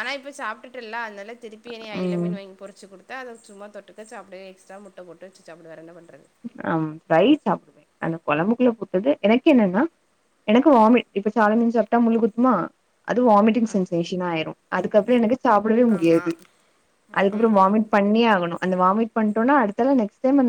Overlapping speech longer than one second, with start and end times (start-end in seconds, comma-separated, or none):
none